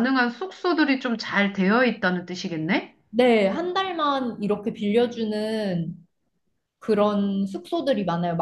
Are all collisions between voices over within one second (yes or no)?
yes